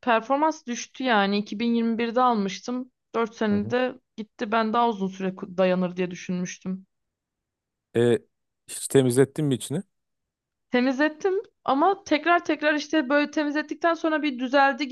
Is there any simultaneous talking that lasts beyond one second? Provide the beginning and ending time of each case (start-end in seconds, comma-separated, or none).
none